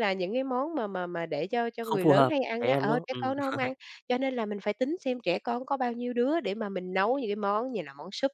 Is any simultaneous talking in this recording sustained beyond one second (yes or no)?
yes